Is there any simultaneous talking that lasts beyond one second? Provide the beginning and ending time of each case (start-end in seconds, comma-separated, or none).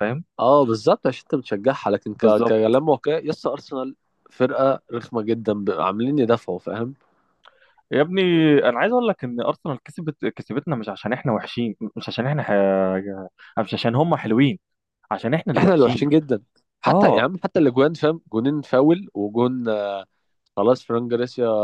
none